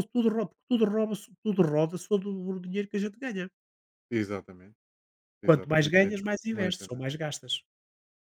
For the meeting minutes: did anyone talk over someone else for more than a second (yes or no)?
yes